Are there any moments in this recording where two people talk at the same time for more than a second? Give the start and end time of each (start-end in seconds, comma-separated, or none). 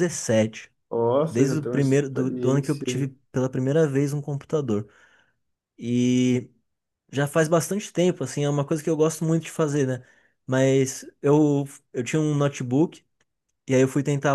1.3-3.1